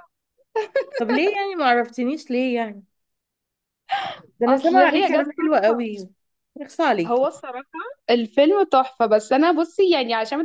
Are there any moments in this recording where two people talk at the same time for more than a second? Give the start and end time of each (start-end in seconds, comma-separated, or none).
4.5-5.7